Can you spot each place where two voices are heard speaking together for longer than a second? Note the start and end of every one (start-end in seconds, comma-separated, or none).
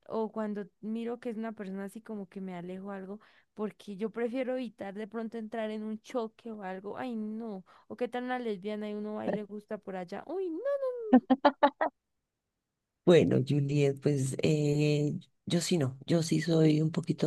none